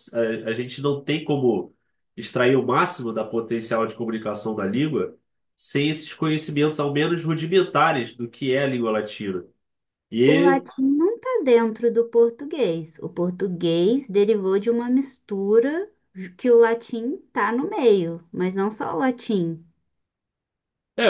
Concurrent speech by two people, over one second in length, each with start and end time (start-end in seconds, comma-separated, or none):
none